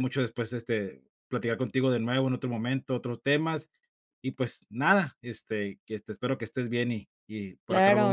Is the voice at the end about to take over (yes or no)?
yes